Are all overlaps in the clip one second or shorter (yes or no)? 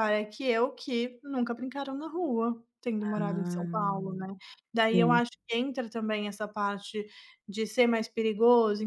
no